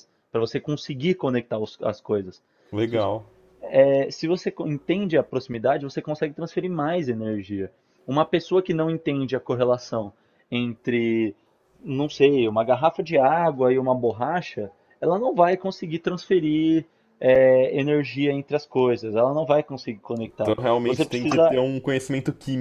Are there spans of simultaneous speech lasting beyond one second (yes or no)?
yes